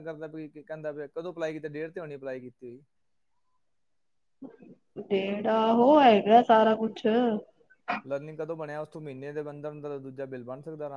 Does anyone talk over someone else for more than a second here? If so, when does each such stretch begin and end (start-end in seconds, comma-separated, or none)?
none